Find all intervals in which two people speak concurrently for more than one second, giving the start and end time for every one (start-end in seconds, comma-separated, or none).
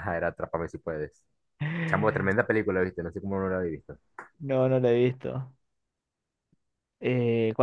none